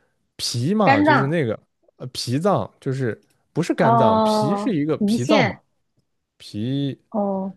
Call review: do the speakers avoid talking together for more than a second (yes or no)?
no